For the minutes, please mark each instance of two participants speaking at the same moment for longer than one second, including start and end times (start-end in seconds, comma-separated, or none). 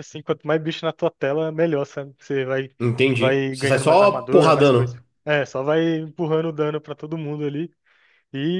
3.1-5.0